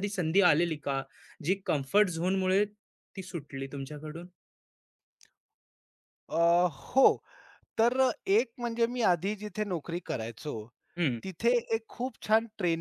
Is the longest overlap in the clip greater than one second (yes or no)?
no